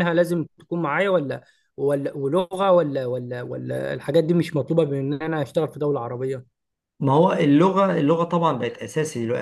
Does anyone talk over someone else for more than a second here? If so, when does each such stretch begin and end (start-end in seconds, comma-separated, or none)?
none